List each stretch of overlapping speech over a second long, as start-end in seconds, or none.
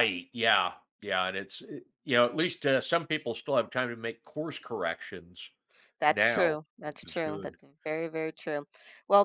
6.1-7.6